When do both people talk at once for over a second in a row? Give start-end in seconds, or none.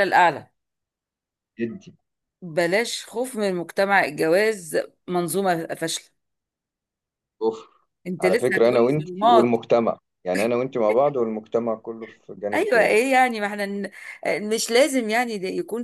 8.1-9.6